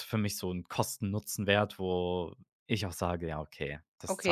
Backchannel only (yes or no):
no